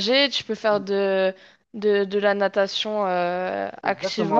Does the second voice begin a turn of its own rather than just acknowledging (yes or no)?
yes